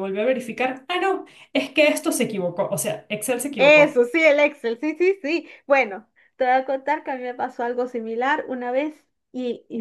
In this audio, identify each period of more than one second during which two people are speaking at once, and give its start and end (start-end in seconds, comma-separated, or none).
none